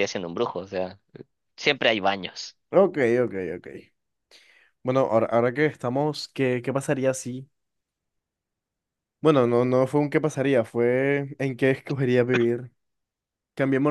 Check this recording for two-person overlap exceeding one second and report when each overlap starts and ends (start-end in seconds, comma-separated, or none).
none